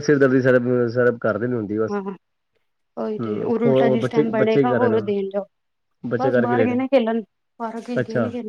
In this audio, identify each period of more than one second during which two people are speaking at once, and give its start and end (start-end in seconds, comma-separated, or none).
3.2-5.1